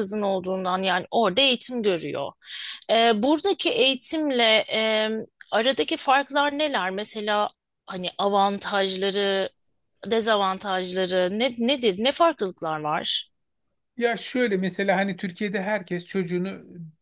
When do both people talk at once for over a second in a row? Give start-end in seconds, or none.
none